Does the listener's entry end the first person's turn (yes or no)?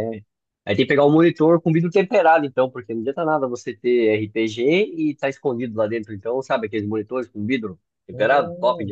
yes